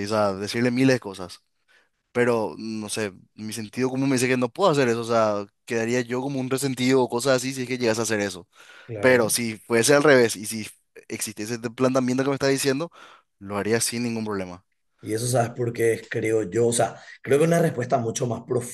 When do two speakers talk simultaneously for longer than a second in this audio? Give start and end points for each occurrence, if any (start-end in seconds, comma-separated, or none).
none